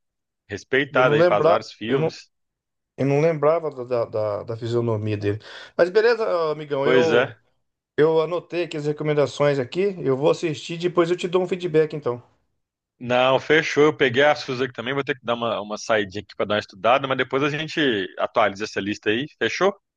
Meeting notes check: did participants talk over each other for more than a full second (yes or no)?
yes